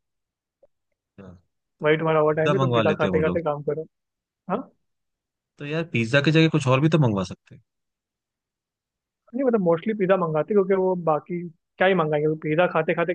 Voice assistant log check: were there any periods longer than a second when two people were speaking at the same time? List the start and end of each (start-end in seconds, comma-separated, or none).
1.8-3.4